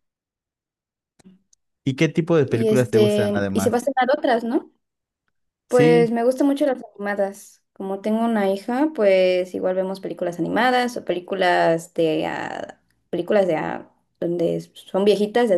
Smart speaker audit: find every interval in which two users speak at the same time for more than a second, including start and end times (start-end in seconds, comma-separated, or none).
2.5-3.9